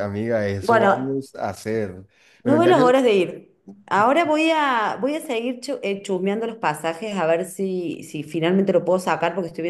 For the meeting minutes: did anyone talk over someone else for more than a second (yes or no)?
no